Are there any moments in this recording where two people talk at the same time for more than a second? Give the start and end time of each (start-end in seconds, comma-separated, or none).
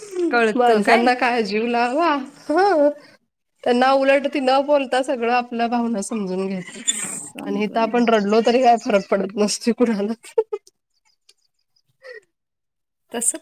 6.8-8.2